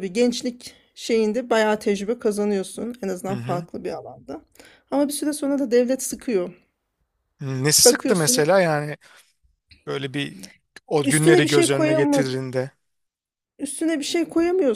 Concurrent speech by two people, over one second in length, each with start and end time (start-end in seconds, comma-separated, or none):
11.0-12.3